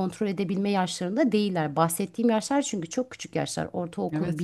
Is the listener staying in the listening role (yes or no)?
yes